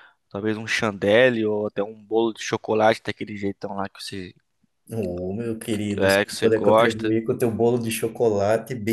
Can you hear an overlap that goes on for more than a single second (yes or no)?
yes